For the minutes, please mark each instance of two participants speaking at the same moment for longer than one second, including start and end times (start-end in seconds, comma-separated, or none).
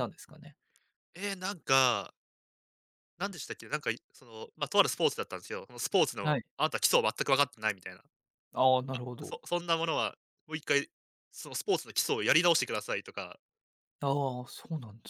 none